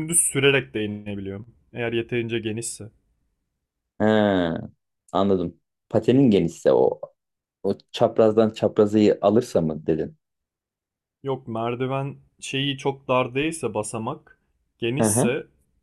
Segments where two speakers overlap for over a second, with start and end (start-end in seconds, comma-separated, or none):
none